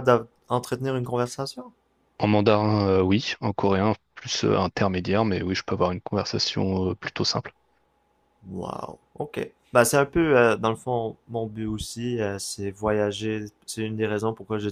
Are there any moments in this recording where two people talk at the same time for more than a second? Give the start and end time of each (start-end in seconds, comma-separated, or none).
none